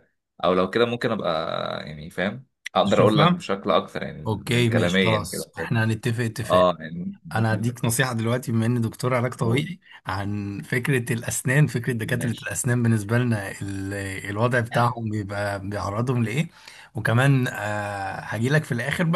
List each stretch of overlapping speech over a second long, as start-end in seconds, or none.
4.3-5.7